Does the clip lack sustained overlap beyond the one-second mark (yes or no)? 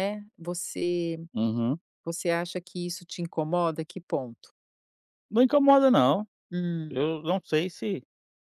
yes